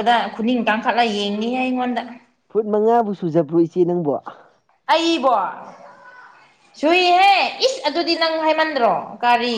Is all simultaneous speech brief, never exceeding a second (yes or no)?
yes